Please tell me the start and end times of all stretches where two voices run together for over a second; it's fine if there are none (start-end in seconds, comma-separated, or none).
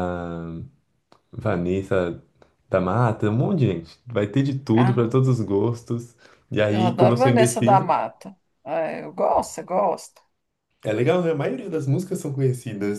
6.7-7.9